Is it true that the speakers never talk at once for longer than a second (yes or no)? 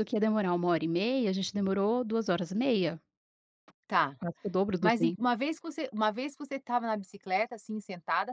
yes